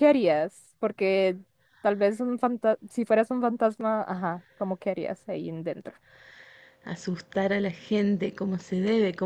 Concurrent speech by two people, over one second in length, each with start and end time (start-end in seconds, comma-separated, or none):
none